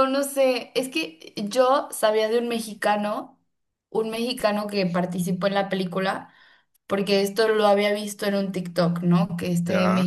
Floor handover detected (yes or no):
no